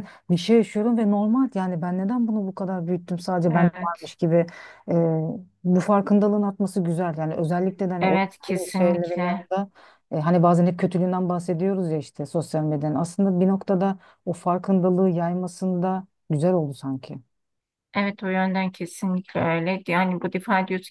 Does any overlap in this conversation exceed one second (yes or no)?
yes